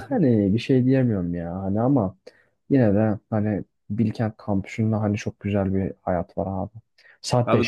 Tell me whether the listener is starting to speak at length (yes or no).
no